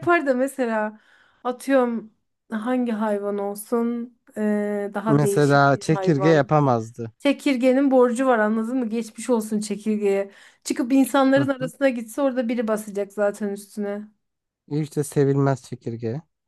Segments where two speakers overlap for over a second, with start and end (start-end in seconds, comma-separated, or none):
5.1-6.5